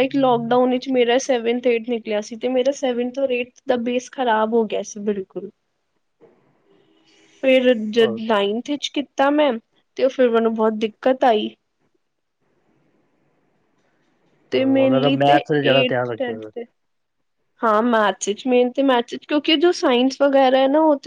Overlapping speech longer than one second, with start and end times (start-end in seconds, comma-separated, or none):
14.5-16.5